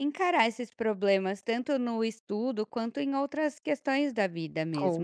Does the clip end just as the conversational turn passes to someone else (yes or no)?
yes